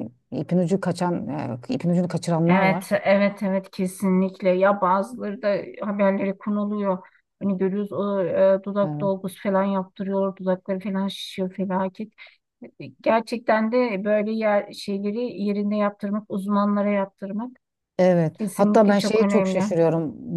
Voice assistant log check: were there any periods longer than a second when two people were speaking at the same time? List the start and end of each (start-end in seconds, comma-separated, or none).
18.3-19.7